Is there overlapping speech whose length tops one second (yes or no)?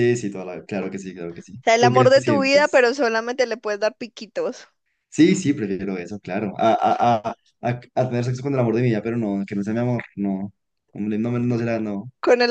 yes